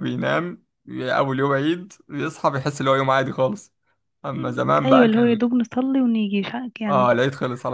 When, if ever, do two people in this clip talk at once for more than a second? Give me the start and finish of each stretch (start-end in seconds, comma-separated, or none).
none